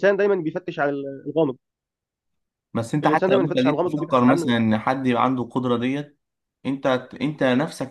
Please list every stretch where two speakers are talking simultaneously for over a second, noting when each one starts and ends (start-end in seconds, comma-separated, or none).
3.0-4.5